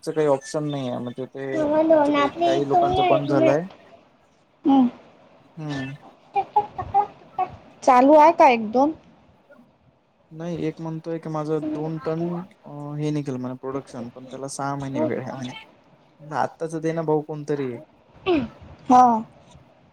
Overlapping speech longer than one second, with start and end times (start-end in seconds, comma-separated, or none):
1.9-3.4